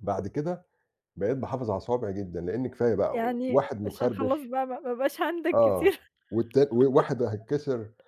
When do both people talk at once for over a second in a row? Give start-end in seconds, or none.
3.1-4.5